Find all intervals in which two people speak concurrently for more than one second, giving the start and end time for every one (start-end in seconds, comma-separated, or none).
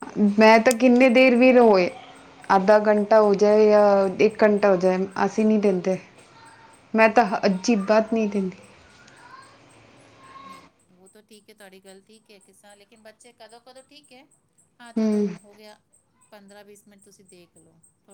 none